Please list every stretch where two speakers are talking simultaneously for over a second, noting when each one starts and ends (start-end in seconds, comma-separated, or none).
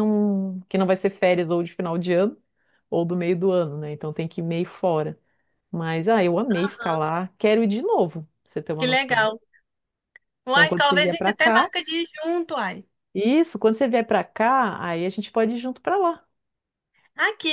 10.5-11.7